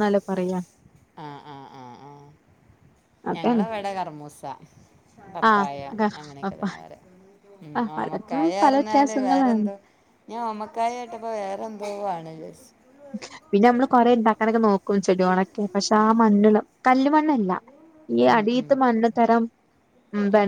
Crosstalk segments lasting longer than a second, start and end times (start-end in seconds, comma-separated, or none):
8.0-9.7